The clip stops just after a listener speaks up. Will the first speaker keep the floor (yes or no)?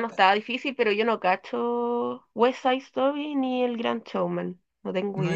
no